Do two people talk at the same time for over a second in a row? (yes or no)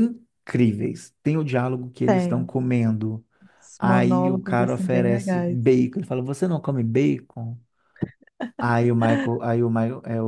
yes